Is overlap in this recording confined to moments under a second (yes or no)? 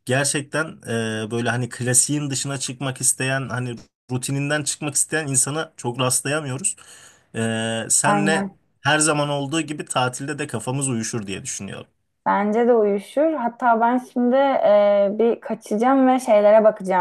yes